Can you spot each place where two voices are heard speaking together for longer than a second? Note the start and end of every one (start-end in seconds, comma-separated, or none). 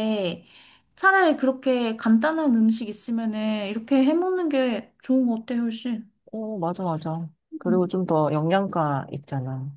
none